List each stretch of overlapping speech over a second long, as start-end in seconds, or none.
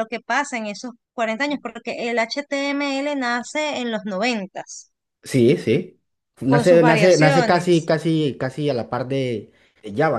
6.5-7.9